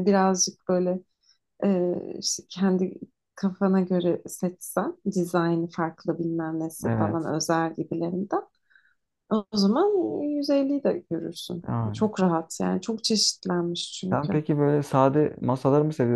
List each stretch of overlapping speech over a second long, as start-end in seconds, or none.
none